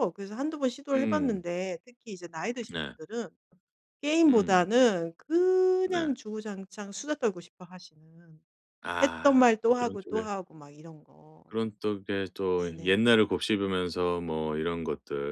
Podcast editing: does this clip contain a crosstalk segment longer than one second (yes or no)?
yes